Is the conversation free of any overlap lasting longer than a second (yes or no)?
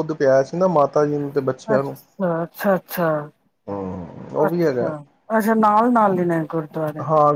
yes